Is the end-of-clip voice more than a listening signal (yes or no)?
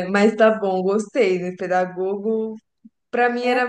no